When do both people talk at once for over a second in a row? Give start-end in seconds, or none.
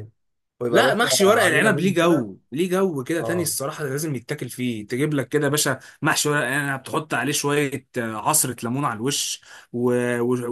0.7-2.3